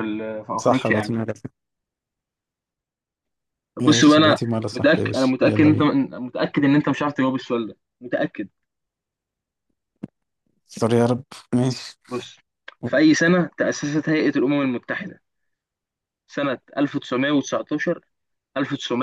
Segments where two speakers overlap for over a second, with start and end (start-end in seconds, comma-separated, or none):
3.8-5.9